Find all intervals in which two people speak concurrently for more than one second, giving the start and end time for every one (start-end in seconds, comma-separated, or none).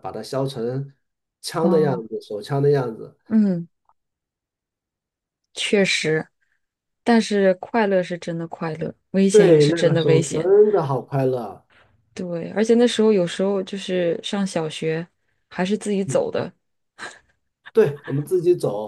9.3-10.5